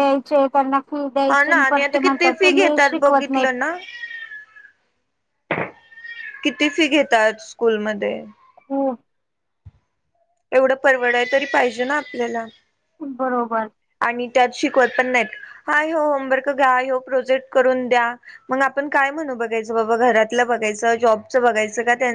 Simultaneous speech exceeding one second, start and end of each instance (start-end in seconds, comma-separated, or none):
1.3-3.5